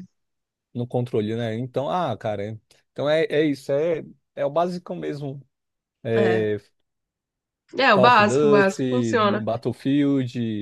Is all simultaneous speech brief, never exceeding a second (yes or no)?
no